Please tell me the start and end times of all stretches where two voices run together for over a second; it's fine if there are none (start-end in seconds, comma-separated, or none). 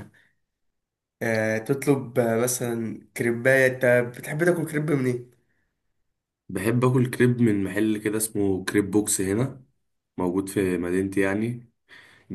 none